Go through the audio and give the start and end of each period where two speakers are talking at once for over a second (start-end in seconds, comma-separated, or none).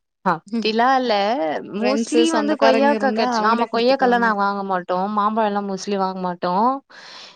1.8-4.3